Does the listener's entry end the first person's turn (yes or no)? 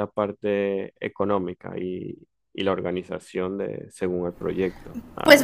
yes